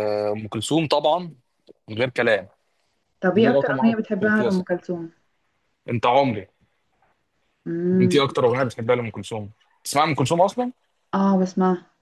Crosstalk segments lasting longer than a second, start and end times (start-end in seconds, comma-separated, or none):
3.3-4.7